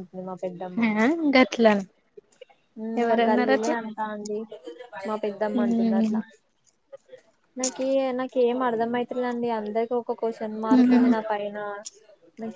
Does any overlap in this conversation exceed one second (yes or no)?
no